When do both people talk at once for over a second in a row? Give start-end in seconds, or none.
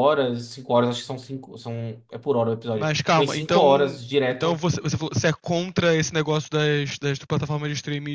2.7-4.6